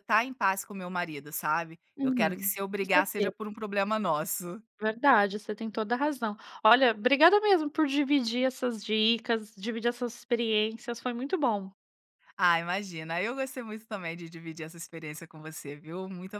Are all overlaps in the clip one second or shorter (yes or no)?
no